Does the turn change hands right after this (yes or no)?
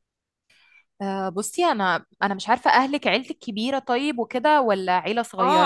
yes